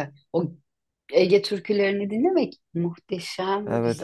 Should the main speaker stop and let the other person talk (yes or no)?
yes